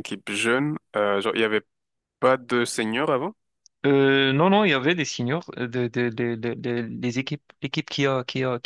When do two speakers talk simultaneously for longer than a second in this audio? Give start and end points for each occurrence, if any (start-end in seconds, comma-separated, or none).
none